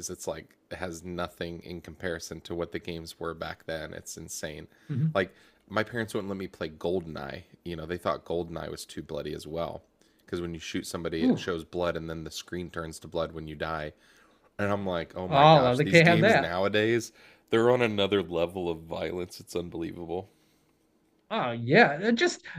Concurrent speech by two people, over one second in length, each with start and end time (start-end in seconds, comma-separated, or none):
15.3-16.5